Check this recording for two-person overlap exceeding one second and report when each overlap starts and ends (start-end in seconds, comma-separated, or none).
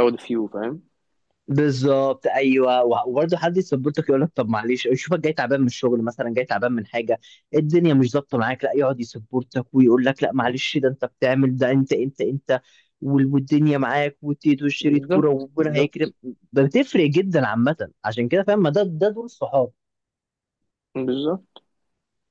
14.8-16.1